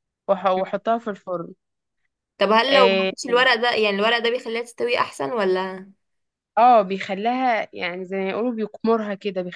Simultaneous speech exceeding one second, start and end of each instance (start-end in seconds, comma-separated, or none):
none